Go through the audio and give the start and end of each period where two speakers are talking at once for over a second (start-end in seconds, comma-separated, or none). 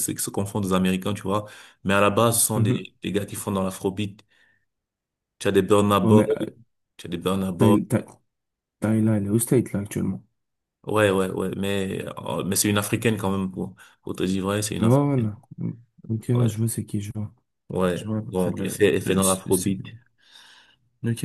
17.9-19.4